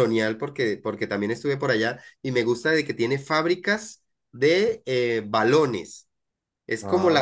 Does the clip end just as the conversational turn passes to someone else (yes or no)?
no